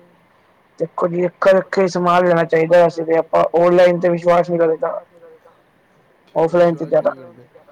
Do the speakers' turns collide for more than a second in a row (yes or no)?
yes